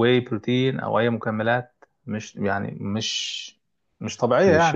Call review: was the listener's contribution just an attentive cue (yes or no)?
no